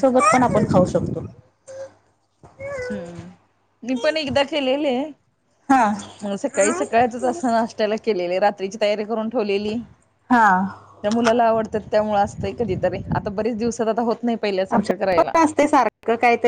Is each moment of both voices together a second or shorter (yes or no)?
yes